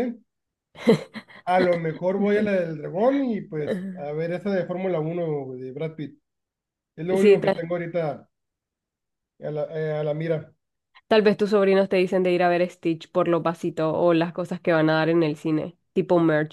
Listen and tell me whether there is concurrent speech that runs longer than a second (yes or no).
no